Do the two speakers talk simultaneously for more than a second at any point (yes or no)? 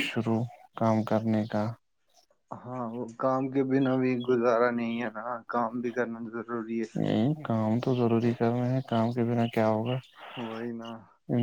no